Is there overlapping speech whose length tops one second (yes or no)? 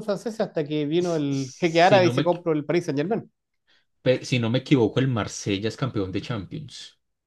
yes